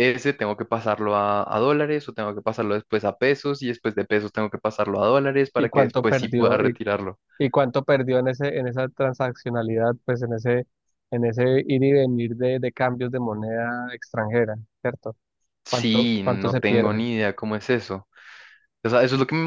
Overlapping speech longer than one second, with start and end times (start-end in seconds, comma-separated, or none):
5.6-6.8, 15.7-17.0